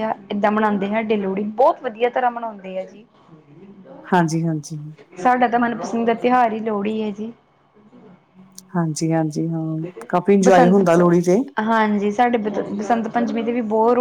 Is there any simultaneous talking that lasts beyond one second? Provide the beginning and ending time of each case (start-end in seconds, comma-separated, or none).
none